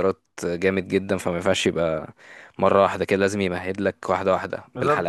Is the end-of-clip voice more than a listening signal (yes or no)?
yes